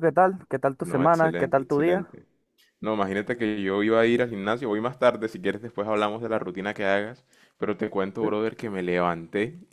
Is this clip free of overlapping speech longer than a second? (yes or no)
no